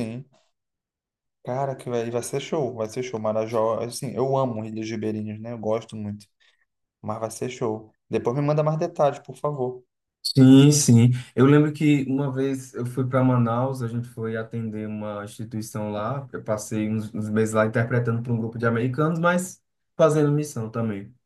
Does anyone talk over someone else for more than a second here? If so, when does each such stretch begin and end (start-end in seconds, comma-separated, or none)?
none